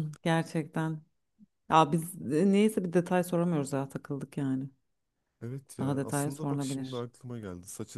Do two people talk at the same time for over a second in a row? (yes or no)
yes